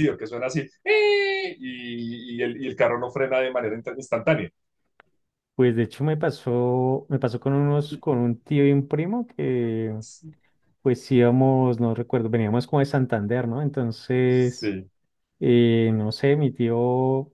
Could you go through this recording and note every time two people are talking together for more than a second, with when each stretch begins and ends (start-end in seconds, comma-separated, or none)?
none